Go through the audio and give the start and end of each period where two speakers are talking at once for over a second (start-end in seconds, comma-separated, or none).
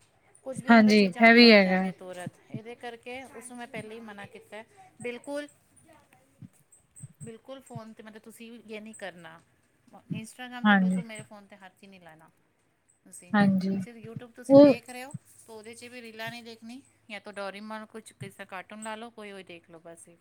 0.5-1.8